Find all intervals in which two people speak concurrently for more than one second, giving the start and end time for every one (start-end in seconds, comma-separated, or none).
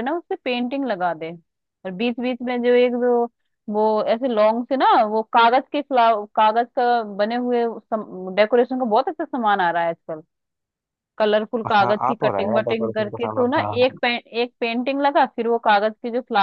11.8-14.0